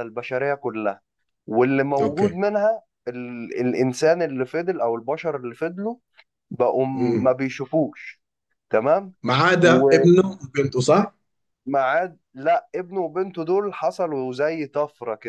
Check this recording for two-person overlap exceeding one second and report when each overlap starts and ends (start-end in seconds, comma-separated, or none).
none